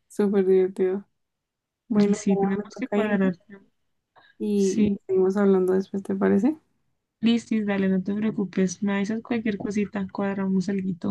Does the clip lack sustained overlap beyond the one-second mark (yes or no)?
no